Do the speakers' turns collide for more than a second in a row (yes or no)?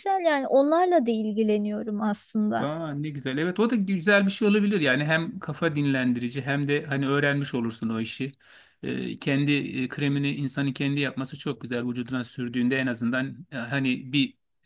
no